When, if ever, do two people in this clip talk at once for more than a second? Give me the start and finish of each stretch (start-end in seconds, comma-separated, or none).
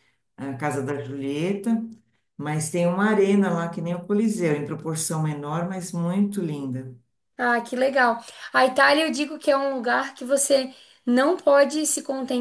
none